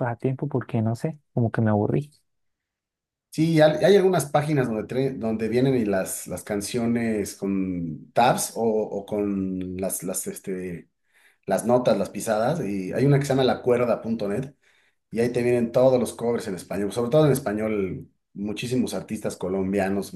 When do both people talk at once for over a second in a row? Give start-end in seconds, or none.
none